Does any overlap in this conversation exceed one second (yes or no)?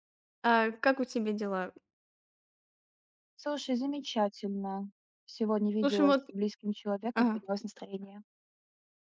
no